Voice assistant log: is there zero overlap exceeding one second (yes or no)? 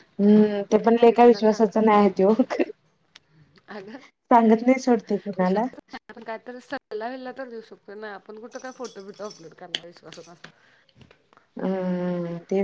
yes